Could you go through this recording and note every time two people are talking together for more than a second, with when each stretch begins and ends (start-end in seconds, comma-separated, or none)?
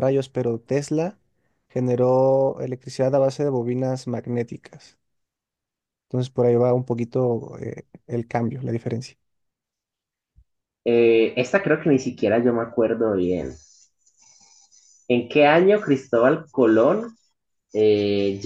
none